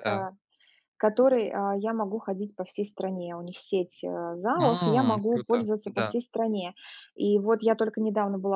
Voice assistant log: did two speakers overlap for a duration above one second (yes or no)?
yes